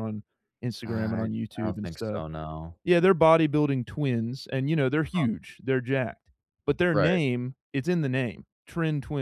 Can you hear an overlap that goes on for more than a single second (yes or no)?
yes